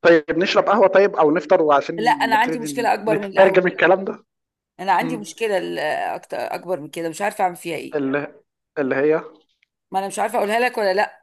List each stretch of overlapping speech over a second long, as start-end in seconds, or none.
2.3-3.6